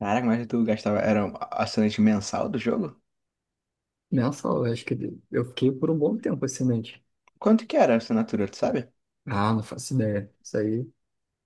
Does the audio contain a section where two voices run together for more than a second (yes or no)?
no